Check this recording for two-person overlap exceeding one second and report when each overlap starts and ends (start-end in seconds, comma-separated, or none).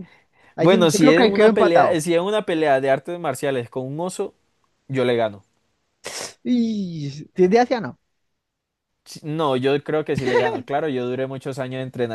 0.6-2.0